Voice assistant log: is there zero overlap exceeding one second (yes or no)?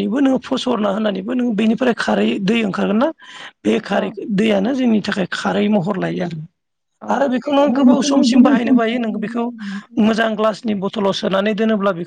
no